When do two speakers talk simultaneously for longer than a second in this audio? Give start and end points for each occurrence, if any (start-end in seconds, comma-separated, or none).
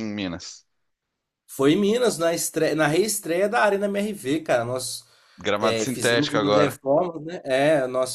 5.6-6.8